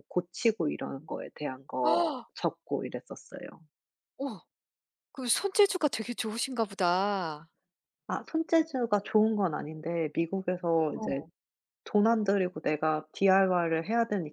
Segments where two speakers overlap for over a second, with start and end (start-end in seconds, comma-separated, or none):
none